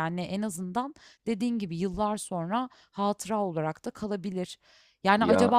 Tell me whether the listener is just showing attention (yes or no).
yes